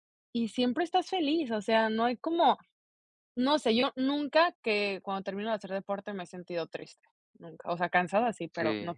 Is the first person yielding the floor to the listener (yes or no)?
yes